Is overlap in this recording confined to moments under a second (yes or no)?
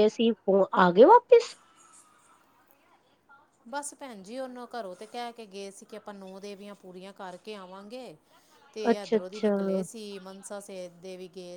yes